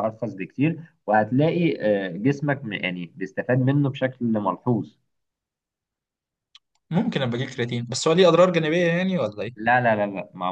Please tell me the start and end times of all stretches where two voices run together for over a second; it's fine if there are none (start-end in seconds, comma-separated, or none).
none